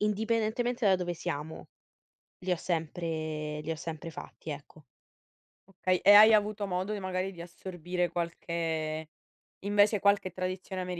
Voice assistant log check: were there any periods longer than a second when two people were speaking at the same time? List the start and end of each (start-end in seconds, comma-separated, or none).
none